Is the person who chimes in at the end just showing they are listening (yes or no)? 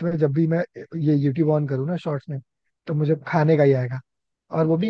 yes